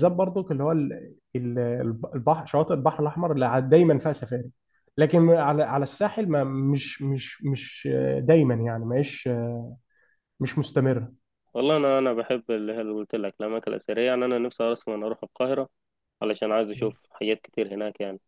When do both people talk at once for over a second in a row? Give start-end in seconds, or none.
none